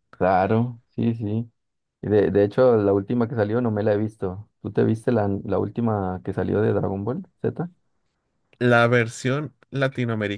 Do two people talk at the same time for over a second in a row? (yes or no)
no